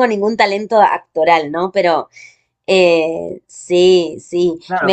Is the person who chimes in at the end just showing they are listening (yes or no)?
no